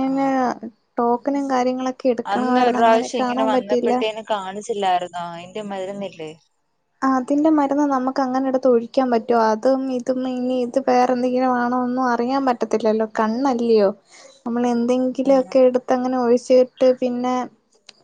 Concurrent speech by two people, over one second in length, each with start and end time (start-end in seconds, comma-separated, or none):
2.3-3.9